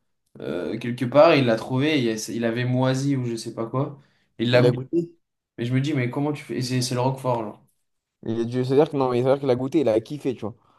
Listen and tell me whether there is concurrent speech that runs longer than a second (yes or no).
no